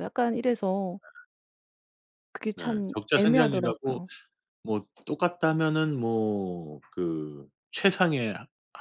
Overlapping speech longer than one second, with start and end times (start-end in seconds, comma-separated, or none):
2.5-4.0